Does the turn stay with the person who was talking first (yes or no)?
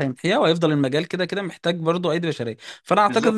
yes